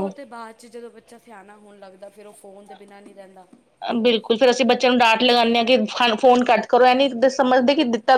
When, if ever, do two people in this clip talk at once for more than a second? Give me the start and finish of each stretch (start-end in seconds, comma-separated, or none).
none